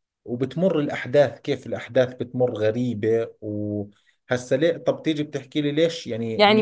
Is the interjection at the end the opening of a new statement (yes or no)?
yes